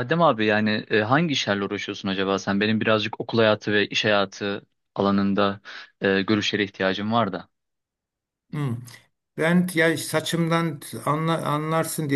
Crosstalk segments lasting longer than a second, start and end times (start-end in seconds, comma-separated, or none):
none